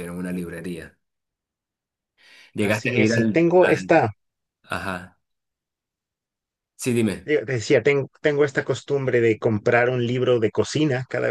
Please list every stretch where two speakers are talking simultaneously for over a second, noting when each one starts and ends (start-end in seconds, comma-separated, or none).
2.6-3.9